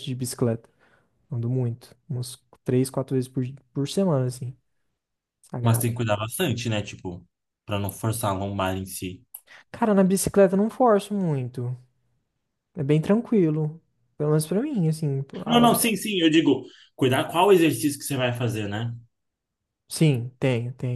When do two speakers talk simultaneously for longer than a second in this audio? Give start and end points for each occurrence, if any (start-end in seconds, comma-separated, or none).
none